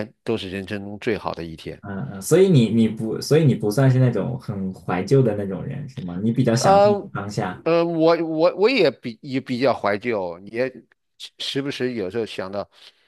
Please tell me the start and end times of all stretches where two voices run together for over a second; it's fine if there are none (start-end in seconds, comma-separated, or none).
none